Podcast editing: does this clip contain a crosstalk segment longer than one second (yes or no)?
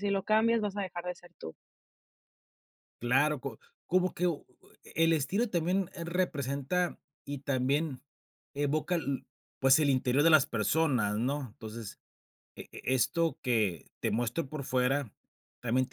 no